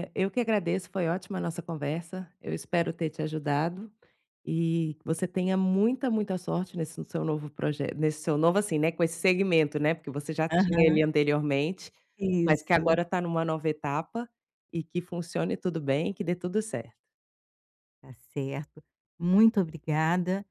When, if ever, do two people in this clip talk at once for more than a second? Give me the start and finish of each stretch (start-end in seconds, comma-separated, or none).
none